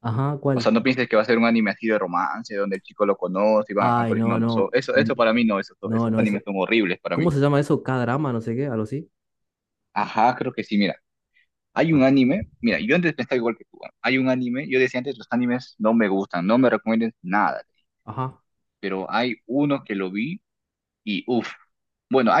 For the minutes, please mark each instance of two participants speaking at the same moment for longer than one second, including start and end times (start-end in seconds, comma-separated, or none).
3.8-5.1